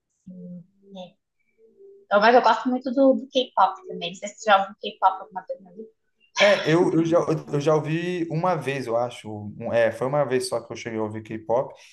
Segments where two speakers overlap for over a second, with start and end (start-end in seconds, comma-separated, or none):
none